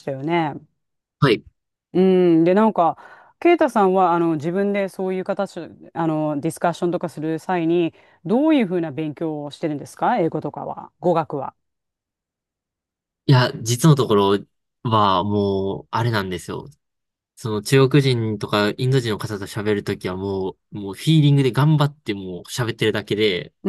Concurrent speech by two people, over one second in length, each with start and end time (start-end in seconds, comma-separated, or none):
none